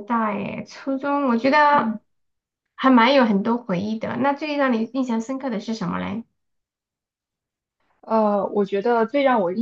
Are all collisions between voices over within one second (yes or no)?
yes